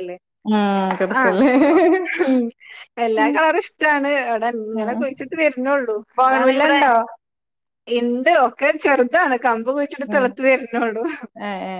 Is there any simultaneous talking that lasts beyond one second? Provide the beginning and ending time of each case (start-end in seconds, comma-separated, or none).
none